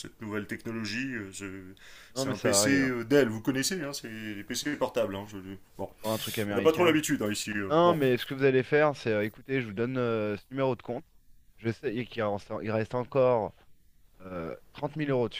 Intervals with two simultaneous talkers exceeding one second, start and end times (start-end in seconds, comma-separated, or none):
2.1-3.6